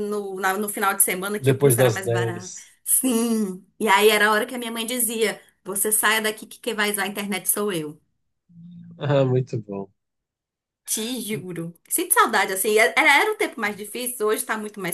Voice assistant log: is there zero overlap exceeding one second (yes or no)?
no